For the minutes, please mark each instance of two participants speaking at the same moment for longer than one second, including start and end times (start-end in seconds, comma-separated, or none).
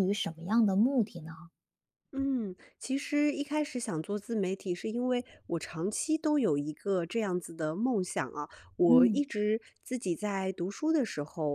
none